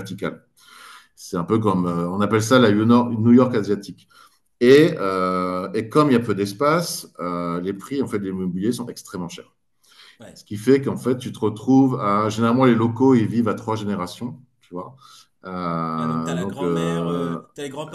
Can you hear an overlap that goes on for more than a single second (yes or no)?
yes